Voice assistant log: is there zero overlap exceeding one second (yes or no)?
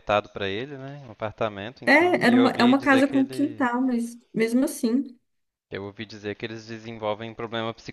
no